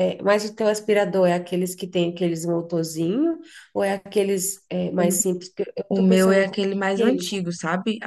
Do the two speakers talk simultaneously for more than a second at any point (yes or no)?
yes